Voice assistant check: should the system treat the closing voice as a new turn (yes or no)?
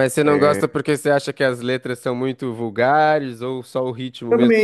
yes